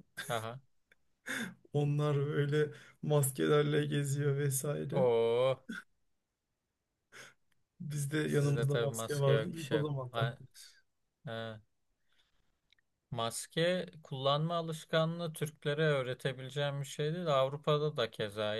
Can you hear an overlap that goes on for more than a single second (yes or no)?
yes